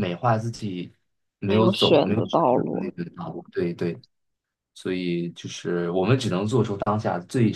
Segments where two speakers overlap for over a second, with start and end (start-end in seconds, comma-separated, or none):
1.4-2.9